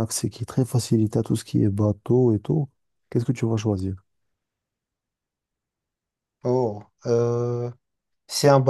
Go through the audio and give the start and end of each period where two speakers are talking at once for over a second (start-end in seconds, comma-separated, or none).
none